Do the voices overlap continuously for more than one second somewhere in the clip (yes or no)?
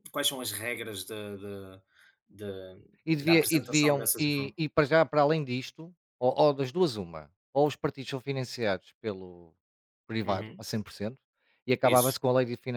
yes